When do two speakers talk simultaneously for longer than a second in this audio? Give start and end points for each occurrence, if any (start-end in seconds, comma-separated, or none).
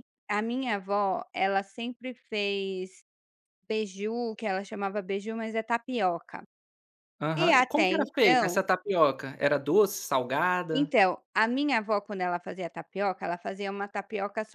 7.4-8.6